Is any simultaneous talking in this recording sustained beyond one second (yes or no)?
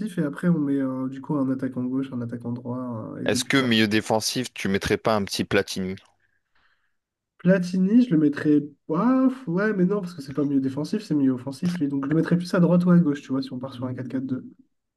no